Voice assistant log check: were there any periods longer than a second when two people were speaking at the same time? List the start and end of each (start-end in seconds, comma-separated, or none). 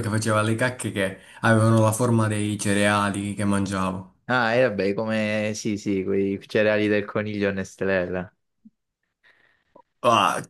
none